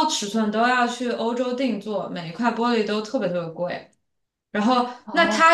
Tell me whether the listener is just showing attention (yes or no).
yes